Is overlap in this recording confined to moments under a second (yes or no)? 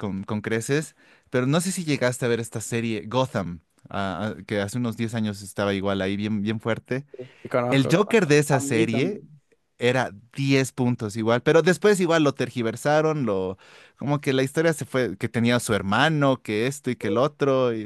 no